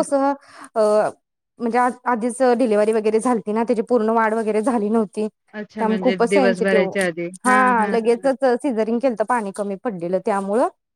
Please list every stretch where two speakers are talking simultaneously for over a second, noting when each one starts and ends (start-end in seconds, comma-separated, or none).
5.5-6.8